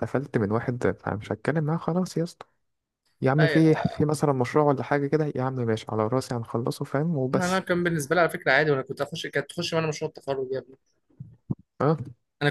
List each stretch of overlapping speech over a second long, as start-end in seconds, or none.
none